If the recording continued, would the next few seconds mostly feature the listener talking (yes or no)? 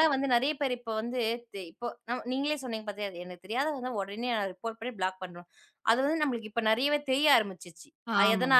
no